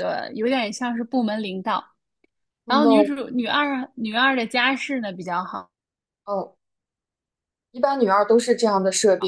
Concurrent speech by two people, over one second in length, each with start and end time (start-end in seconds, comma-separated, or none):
none